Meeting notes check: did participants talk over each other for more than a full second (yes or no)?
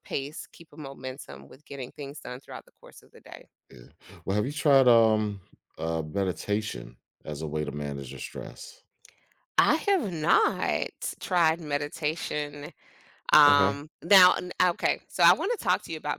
no